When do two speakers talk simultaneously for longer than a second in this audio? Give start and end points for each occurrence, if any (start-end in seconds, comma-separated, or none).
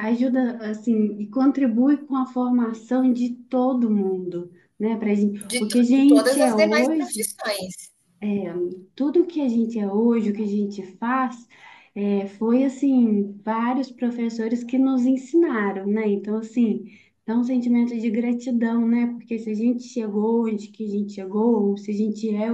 5.4-7.3